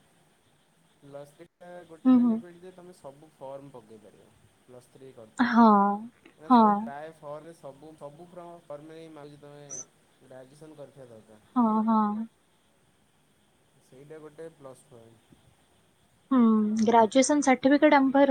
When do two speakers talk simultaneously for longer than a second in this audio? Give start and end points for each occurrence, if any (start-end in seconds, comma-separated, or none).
none